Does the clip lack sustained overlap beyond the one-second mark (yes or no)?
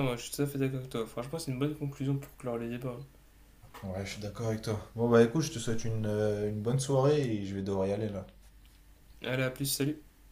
yes